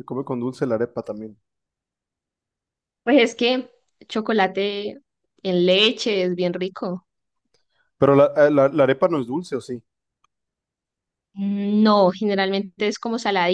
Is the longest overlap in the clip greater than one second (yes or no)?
no